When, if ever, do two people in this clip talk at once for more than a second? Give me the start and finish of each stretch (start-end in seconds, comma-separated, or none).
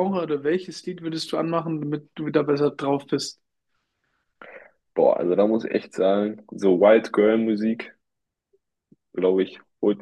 none